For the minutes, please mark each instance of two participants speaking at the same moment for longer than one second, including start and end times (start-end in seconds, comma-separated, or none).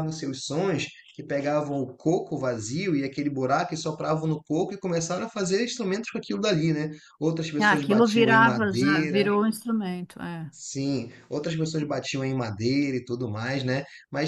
7.6-9.3